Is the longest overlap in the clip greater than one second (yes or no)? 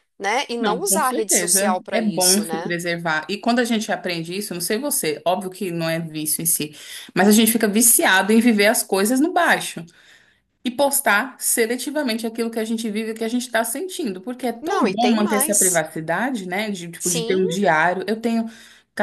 yes